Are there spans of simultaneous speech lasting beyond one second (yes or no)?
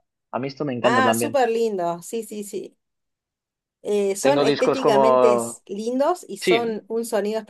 yes